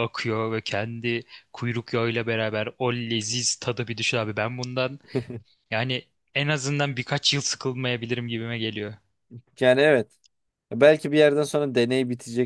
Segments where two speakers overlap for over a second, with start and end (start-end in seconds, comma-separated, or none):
none